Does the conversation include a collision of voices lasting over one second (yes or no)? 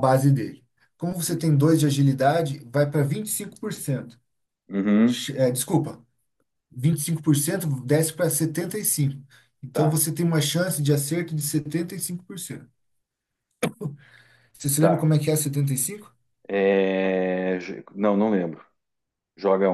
no